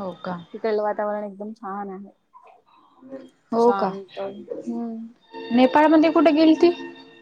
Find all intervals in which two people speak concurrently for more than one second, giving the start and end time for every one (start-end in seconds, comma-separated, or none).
none